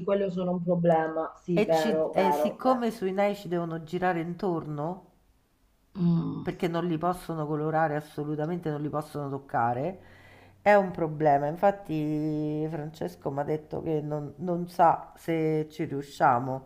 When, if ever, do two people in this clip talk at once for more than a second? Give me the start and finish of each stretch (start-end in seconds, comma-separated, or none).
1.5-2.9